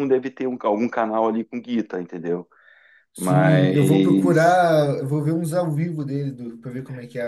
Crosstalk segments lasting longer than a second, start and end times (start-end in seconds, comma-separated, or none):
3.2-4.6